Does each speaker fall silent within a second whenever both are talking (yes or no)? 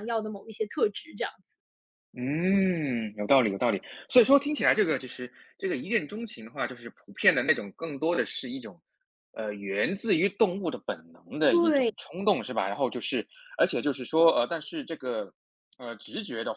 yes